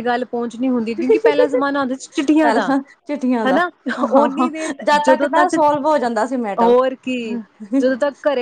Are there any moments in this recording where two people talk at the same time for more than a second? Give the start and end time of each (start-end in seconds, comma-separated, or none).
none